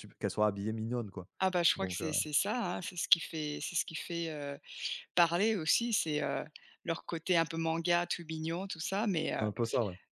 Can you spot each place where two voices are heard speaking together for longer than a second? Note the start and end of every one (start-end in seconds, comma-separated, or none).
none